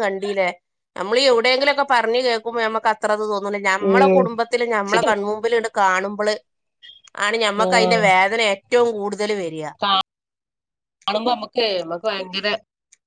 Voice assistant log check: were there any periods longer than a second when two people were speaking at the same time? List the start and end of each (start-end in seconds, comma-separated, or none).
none